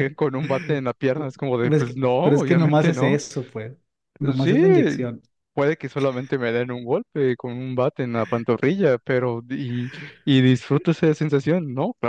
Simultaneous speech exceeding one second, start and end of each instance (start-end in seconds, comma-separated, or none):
1.6-3.2